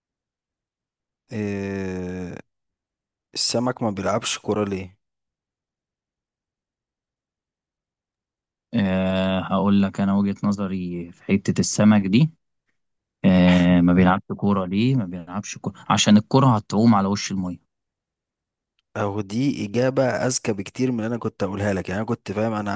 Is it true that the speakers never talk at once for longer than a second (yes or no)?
yes